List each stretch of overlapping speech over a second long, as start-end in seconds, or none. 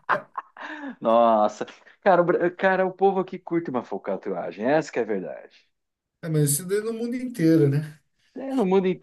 none